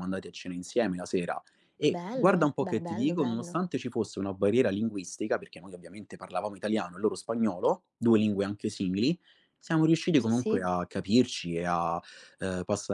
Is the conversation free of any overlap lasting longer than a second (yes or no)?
no